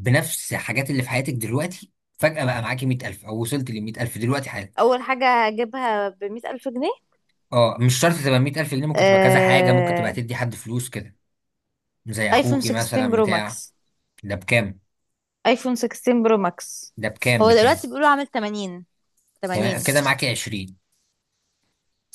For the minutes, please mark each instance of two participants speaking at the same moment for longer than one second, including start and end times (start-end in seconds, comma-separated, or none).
8.9-10.2, 12.3-13.6